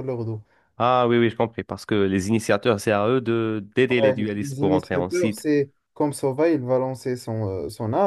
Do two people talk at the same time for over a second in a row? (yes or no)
yes